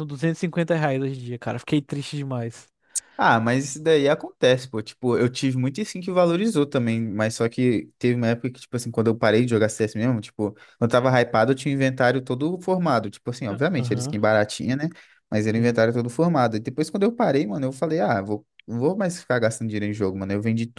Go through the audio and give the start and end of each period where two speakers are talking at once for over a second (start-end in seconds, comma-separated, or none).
none